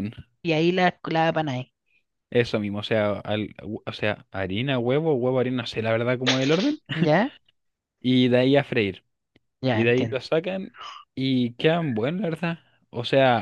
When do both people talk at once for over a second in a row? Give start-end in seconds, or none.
none